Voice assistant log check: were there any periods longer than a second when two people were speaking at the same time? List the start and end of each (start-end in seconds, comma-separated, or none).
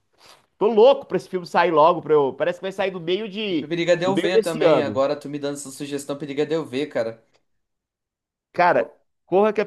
3.6-5.0